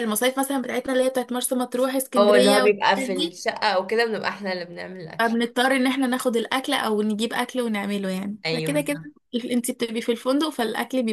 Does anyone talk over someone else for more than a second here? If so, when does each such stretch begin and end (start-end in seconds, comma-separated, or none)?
2.2-3.4